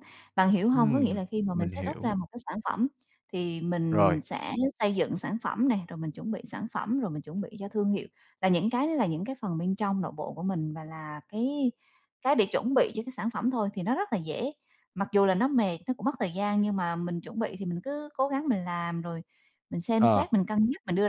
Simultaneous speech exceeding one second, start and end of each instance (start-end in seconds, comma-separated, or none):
0.7-2.1